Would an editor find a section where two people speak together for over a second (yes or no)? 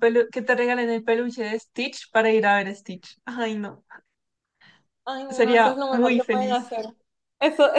yes